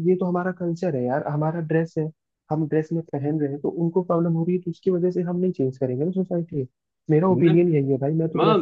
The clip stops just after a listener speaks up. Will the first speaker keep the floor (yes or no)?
no